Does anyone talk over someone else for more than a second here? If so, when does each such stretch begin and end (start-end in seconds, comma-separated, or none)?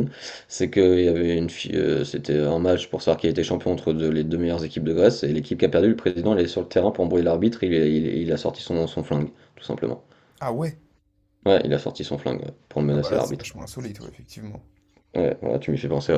none